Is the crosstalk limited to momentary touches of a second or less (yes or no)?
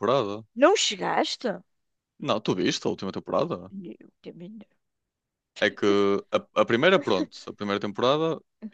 yes